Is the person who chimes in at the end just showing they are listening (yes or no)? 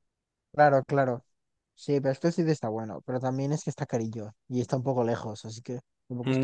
no